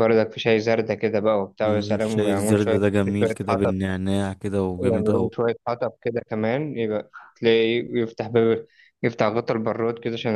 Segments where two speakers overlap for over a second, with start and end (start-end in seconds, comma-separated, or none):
1.6-3.7